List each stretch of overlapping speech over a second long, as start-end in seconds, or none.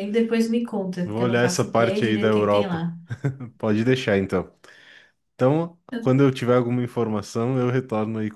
1.0-2.8